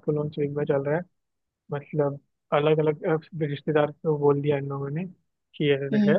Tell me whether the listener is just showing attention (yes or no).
yes